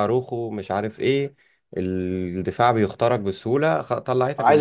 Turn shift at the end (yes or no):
yes